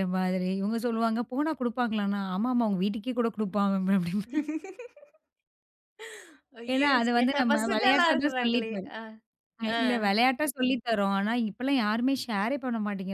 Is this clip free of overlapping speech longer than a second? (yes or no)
no